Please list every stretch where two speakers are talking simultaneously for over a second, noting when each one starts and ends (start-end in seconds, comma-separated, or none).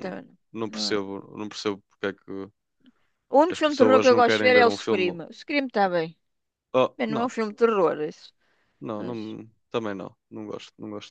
3.5-5.2